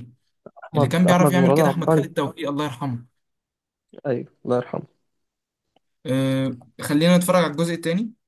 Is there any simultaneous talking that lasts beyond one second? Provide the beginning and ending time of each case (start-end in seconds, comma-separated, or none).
0.7-2.0